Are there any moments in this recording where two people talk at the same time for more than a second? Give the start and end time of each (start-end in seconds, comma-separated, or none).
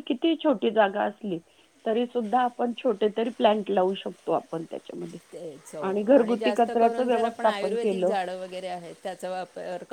6.0-8.1